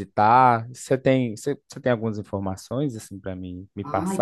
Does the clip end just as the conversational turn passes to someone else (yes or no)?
yes